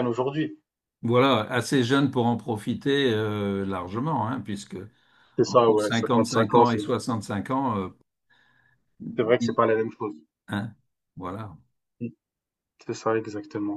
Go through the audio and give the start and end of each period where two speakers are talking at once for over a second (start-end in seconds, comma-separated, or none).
5.4-6.8